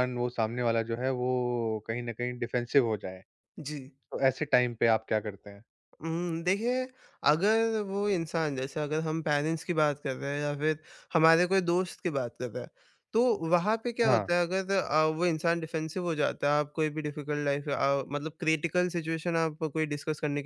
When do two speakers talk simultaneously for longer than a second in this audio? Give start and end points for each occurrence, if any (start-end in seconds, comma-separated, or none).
none